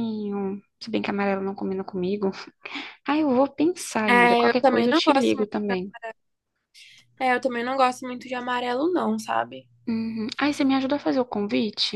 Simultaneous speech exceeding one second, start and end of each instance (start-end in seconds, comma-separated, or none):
4.1-5.4